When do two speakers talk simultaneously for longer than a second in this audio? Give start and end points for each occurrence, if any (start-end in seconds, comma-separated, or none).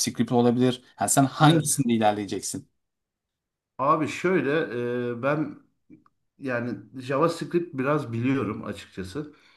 none